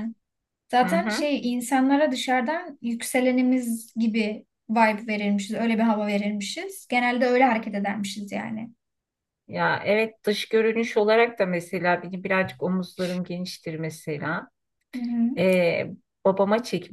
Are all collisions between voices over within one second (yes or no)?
yes